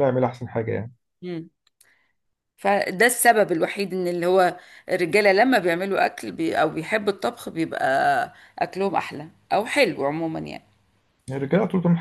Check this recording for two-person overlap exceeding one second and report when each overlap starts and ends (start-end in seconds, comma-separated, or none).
none